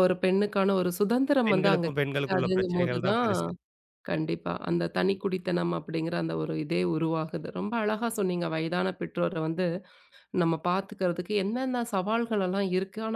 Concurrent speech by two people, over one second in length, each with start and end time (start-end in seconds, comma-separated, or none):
1.5-3.3